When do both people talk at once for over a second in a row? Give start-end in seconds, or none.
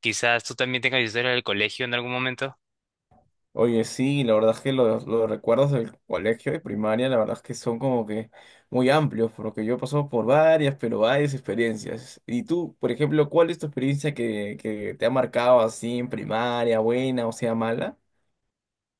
none